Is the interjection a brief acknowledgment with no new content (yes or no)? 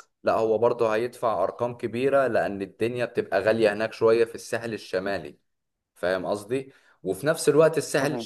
yes